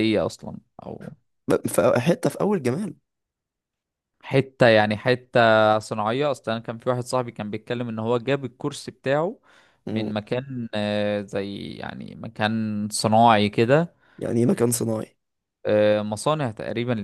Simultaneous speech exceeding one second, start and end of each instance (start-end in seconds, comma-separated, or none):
none